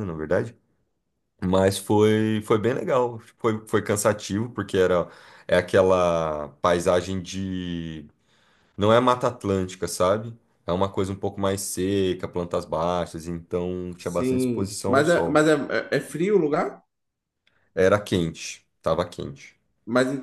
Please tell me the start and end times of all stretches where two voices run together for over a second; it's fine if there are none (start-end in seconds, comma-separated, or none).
14.0-15.4